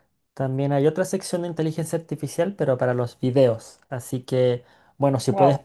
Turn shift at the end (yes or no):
no